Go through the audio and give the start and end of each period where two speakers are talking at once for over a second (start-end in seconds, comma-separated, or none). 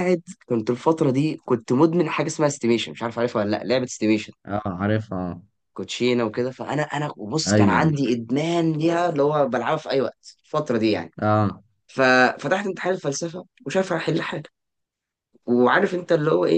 none